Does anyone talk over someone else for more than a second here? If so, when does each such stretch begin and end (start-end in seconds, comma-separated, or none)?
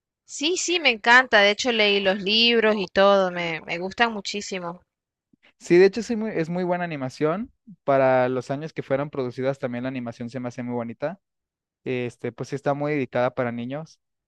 none